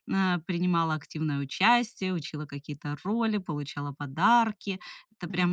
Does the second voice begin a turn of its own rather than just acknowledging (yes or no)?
no